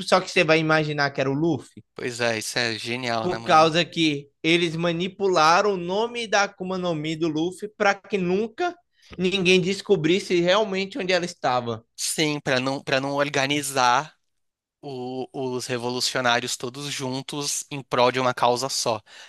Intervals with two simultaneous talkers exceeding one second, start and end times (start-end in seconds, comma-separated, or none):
none